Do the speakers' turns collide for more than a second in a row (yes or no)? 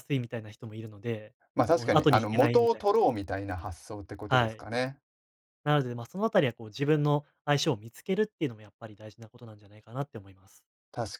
yes